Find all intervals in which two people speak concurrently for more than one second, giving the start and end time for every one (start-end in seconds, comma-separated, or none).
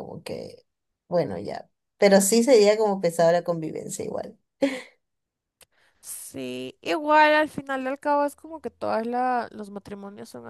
none